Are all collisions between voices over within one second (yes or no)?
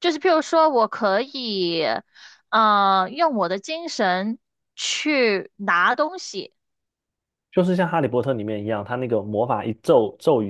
yes